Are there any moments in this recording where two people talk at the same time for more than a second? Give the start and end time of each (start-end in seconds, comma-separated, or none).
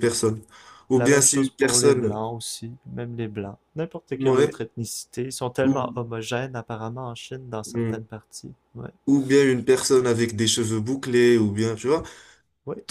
0.9-2.2